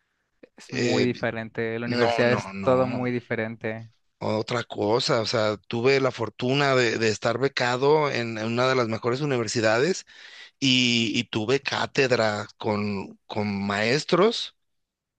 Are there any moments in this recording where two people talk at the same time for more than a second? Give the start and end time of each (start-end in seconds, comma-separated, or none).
1.9-3.1